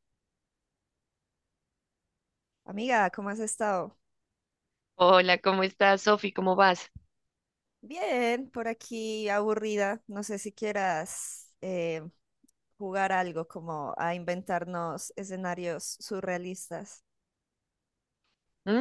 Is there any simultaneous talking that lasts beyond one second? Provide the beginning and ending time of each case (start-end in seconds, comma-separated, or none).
none